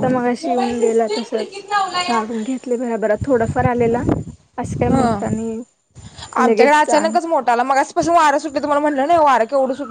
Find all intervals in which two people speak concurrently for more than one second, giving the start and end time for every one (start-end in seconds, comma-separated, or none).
none